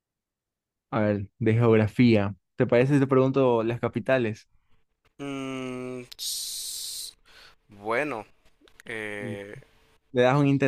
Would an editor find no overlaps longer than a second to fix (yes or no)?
yes